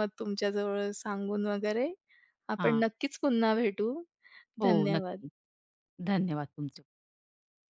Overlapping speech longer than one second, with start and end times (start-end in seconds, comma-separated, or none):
none